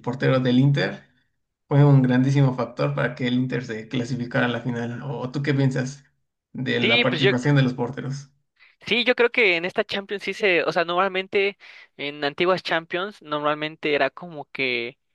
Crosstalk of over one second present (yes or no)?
no